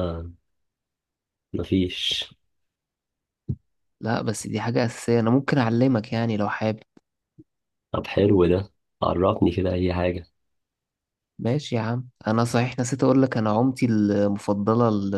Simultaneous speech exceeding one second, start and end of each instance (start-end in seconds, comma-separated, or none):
none